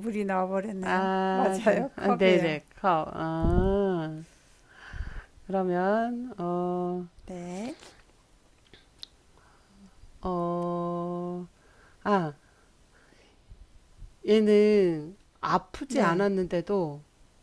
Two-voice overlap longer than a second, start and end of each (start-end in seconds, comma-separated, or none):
0.8-2.6